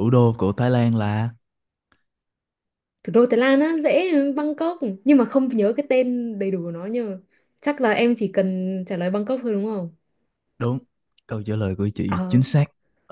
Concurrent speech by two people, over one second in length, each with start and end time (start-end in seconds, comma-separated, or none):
none